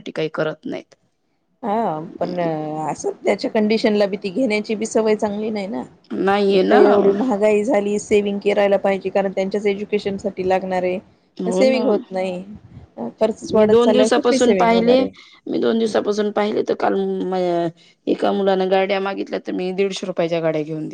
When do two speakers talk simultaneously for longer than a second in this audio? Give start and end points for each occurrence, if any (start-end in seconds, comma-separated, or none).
13.6-15.0